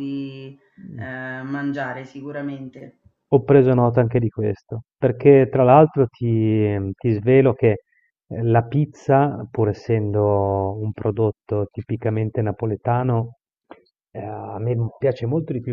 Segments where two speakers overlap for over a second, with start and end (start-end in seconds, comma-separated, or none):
none